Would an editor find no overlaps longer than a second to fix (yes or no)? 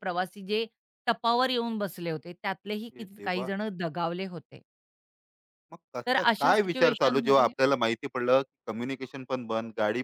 no